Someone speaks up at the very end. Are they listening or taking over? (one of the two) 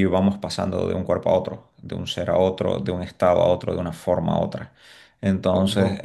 taking over